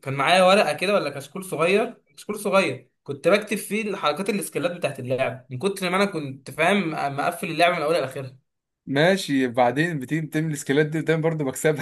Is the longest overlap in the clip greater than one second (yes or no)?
no